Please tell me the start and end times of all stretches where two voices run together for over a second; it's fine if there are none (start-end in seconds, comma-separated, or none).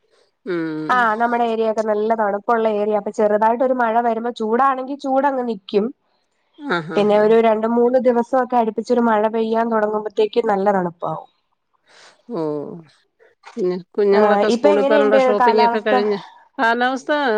14.2-15.9